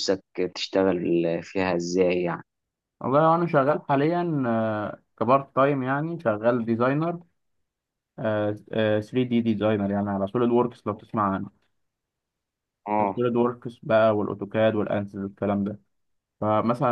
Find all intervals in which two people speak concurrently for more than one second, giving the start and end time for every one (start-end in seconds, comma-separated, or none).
none